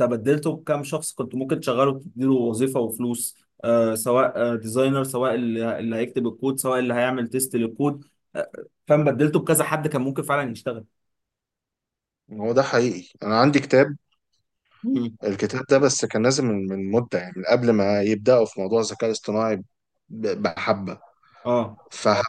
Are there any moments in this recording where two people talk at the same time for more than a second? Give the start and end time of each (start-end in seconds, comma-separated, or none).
none